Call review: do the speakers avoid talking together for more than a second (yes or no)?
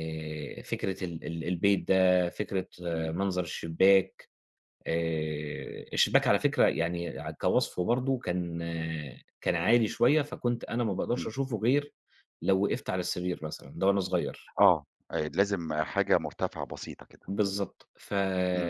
yes